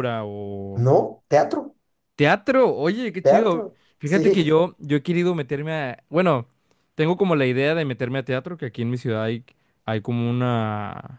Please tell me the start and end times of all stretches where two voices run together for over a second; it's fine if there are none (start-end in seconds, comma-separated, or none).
3.2-4.6